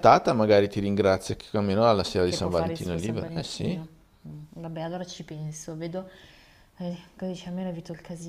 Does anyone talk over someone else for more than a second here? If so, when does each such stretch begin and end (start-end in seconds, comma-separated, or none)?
2.2-3.8